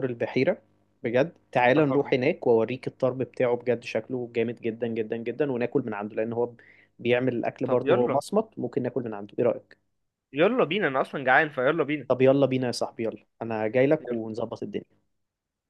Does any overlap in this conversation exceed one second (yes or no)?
no